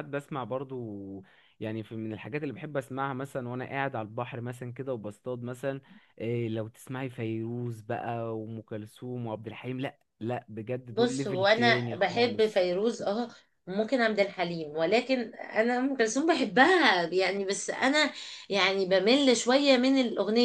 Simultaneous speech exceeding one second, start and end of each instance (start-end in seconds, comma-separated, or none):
10.9-12.7